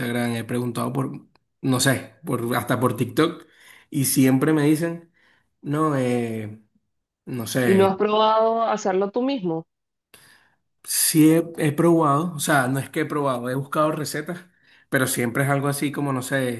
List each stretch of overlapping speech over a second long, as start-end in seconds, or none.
none